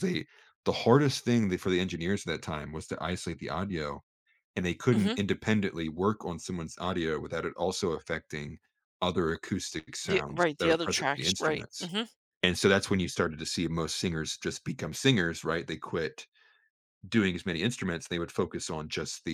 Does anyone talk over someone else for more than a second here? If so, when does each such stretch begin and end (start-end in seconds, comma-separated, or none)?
10.1-11.9